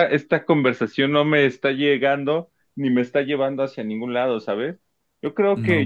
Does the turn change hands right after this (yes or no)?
no